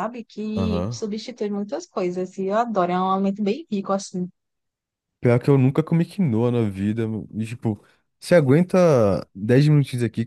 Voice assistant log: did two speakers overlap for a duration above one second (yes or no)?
no